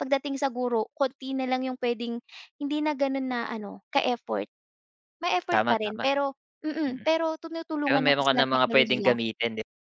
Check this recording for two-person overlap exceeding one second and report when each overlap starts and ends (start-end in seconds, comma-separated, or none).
7.9-9.1